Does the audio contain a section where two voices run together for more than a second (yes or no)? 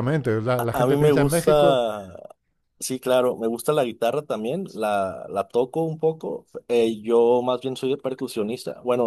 yes